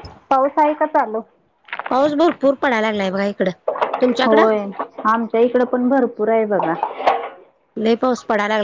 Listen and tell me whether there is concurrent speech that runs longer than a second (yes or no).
no